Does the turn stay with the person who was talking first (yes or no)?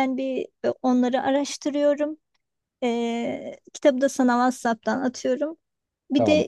yes